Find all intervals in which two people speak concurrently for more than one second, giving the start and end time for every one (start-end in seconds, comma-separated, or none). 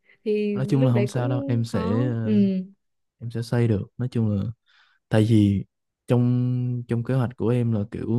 0.5-2.3